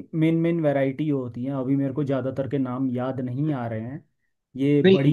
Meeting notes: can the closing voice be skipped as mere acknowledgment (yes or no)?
no